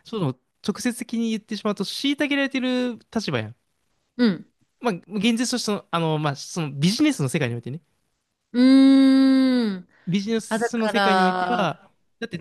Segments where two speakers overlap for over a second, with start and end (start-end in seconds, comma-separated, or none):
10.5-11.8